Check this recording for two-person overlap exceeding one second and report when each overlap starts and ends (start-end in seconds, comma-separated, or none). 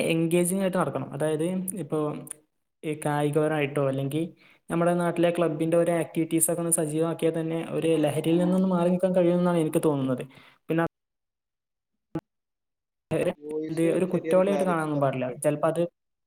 13.7-15.3